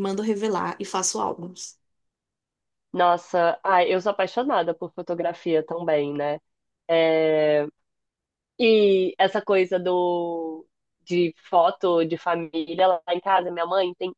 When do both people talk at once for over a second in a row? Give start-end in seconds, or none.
none